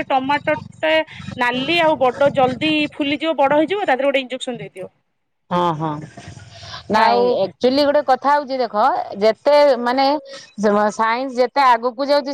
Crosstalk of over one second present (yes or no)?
no